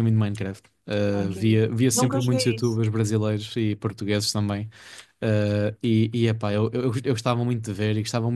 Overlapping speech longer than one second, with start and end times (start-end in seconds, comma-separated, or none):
1.1-2.8